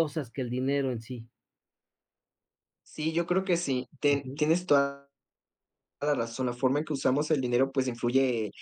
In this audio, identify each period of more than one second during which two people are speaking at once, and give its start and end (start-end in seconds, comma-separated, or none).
none